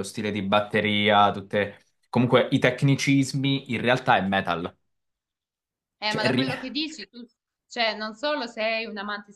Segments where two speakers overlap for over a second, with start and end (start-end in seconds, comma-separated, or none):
none